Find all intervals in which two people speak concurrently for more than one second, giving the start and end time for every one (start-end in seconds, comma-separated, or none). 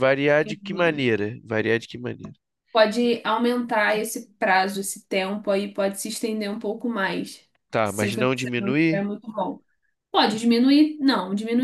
7.8-9.0